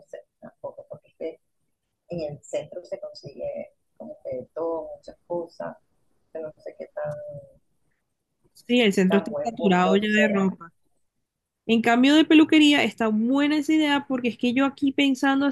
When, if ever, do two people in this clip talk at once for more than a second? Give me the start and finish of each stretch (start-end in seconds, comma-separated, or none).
9.1-10.5